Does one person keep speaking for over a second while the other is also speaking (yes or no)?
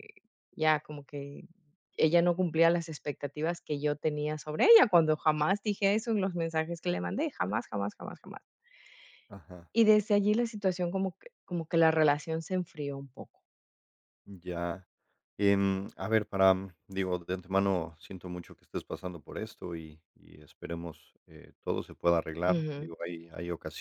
no